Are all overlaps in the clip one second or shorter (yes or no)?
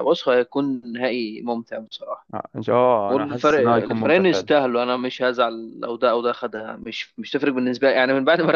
no